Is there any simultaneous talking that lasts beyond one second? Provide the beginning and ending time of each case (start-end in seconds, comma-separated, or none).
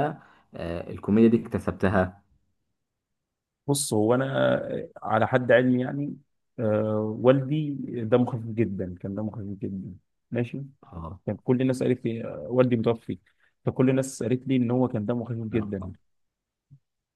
none